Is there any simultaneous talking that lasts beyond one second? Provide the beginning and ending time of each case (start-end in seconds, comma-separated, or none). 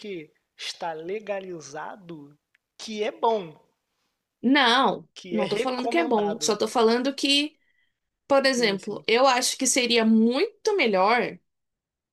5.1-6.6